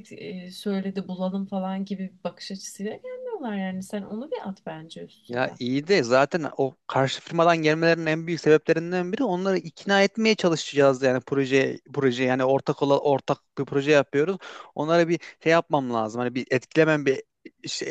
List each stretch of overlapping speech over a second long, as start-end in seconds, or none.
none